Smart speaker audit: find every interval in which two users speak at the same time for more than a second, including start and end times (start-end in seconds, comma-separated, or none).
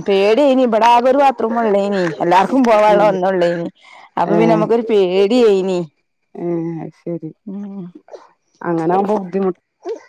none